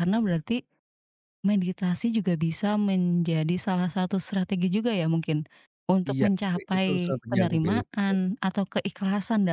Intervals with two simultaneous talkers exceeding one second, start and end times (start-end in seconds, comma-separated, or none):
6.1-8.2